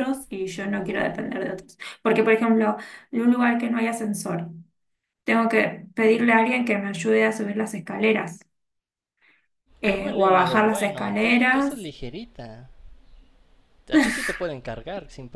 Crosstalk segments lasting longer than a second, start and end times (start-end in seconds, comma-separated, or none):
9.8-11.9